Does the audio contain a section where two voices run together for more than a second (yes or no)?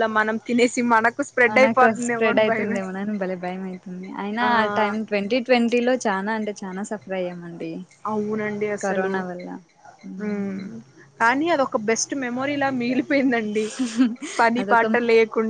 yes